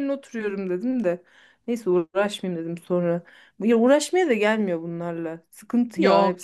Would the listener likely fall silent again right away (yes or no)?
no